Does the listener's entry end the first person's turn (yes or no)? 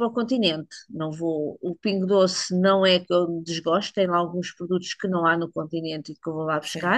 no